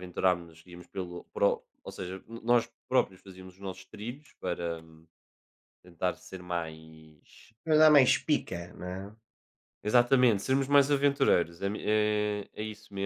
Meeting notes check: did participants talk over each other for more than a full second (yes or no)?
no